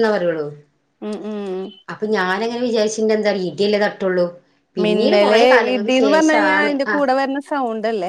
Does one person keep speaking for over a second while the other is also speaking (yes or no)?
yes